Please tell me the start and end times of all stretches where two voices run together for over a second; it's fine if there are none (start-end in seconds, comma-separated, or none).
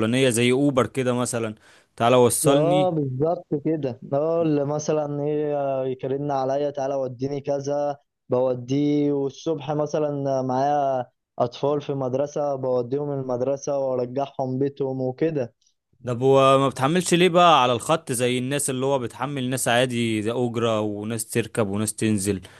none